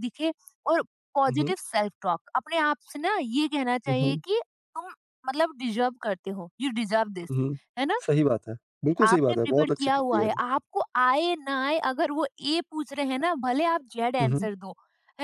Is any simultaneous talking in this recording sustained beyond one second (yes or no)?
yes